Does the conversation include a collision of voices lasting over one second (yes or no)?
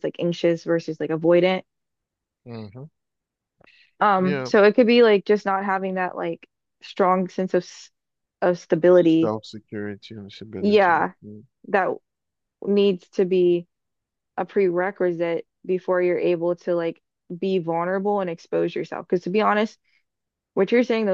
no